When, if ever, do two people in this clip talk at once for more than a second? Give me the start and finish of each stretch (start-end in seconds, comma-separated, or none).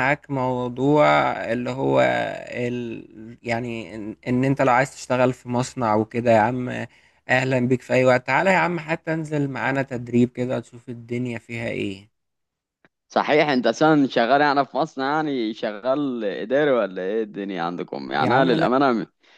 none